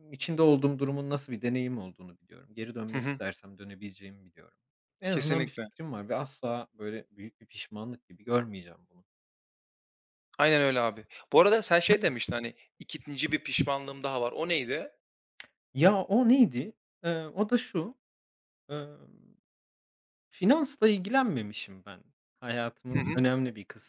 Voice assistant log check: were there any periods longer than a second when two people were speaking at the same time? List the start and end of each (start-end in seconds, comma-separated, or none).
none